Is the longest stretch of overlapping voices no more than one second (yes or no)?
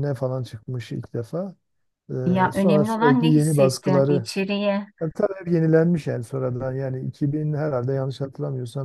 no